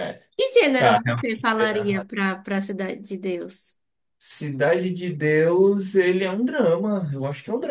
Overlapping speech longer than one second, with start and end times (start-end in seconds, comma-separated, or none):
0.8-2.1